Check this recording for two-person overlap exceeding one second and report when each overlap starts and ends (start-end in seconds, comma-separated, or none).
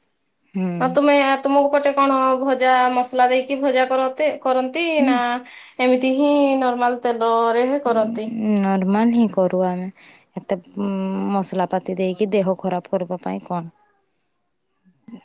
none